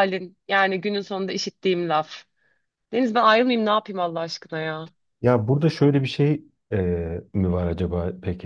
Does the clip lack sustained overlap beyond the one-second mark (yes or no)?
yes